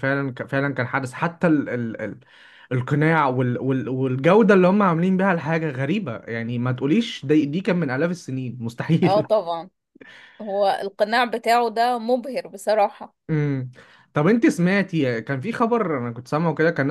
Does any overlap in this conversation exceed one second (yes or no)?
no